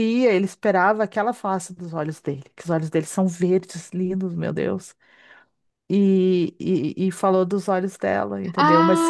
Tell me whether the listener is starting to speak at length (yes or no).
yes